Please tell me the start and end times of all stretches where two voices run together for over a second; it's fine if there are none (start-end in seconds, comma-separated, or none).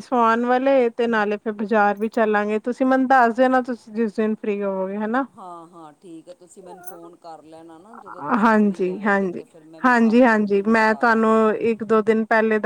9.8-11.3